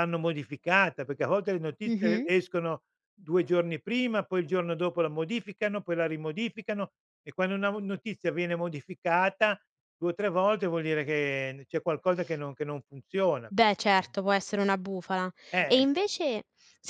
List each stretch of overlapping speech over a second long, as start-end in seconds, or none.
none